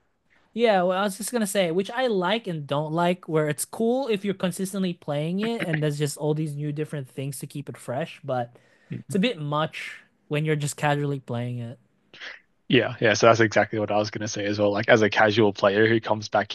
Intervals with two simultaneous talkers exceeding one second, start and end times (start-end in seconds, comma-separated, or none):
none